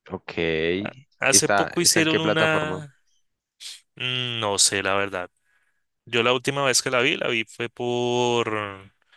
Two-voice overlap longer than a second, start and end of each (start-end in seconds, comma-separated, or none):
1.3-2.8